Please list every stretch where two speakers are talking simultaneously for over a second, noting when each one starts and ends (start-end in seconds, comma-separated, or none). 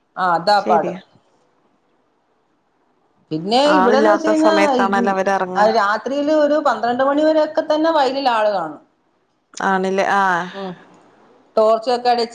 3.8-5.6